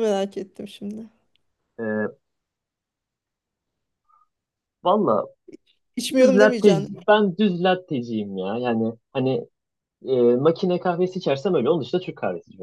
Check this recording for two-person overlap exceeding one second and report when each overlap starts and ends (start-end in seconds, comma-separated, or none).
none